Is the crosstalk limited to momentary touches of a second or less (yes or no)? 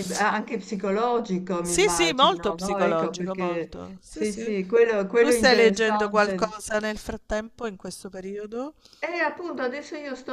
no